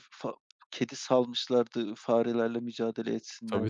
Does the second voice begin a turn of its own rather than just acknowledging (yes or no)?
yes